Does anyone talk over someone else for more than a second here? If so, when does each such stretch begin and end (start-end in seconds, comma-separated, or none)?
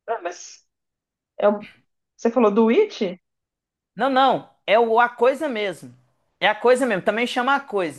none